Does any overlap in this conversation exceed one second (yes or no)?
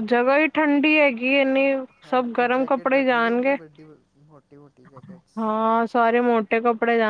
yes